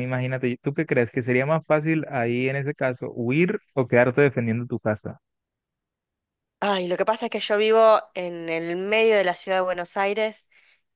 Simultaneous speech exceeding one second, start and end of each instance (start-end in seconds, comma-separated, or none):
none